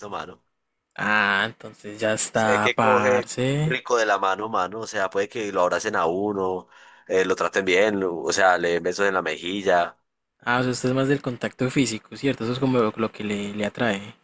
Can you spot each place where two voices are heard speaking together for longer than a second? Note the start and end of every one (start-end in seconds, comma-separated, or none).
2.3-3.8